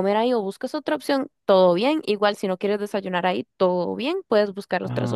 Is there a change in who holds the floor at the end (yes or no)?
no